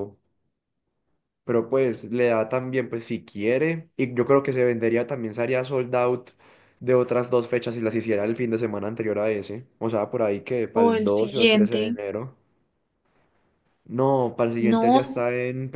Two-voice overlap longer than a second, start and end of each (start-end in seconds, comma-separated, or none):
10.7-12.0